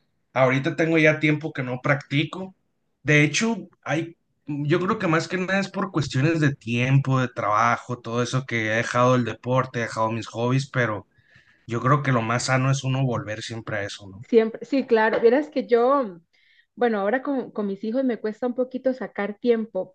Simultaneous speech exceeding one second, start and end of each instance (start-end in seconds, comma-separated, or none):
none